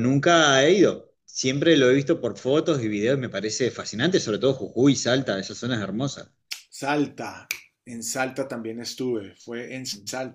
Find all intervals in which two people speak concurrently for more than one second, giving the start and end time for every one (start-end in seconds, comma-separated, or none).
none